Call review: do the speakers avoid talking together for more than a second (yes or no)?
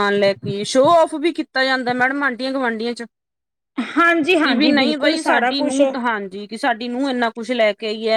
no